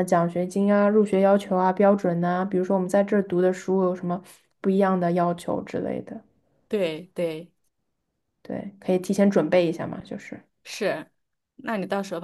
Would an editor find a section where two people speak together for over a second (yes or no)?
no